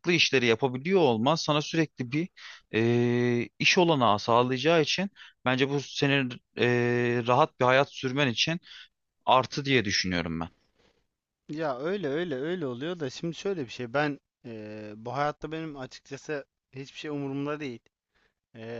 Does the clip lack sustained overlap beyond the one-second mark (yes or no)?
yes